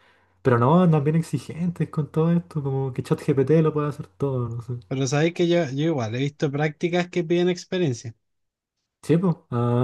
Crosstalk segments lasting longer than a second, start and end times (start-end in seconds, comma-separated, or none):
none